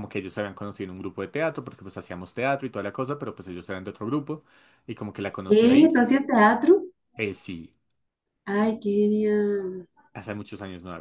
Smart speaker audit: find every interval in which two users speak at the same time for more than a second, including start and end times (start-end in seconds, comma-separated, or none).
none